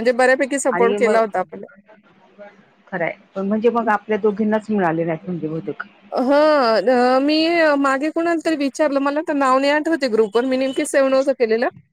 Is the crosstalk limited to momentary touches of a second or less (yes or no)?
yes